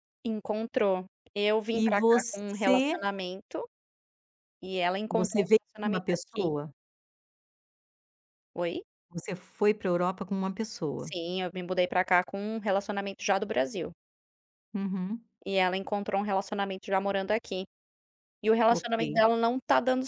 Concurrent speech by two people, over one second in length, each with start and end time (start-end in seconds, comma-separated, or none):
1.7-3.0, 5.1-6.5